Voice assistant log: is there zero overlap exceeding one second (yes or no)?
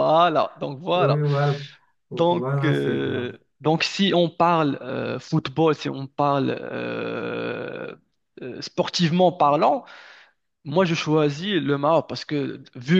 no